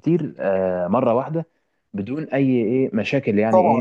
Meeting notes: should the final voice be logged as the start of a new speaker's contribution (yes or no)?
yes